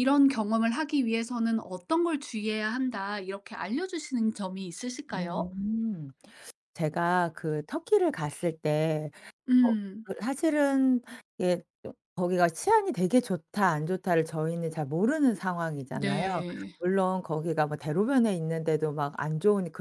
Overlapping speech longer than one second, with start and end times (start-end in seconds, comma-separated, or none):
none